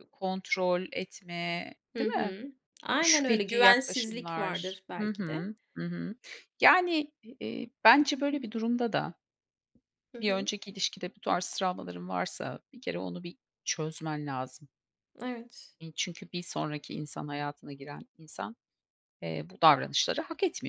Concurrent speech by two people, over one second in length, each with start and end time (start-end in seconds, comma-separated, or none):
3.0-5.5